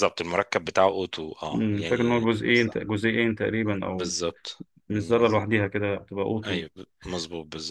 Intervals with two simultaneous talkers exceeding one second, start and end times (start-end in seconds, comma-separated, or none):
1.5-2.8